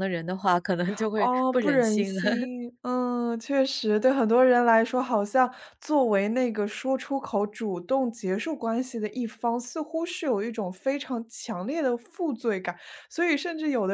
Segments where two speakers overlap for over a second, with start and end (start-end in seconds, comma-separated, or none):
1.2-2.5